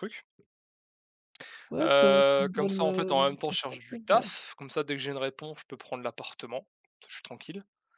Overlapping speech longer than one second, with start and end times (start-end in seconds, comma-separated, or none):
1.8-4.2